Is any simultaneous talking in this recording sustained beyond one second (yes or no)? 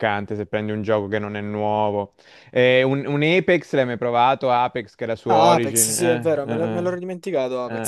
yes